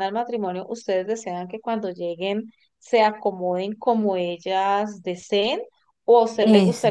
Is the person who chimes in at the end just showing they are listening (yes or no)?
yes